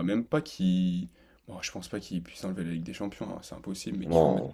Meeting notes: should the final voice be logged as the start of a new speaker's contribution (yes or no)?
no